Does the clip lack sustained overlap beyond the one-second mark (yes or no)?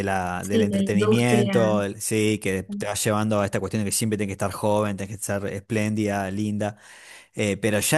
no